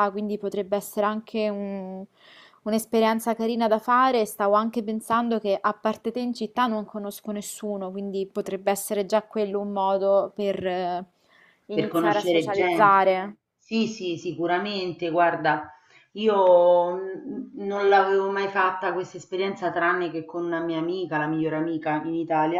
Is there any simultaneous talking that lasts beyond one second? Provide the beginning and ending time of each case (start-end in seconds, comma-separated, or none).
11.7-13.0